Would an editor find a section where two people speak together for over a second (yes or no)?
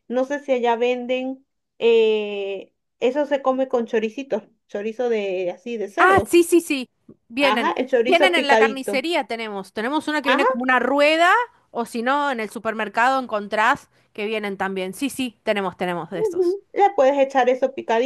yes